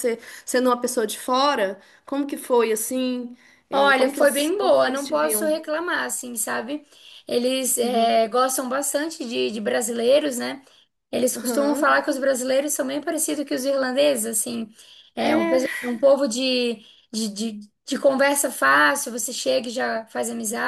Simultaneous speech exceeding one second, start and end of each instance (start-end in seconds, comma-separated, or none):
3.7-5.5